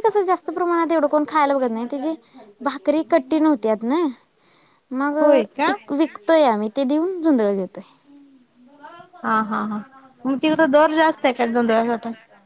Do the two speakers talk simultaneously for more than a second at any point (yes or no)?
no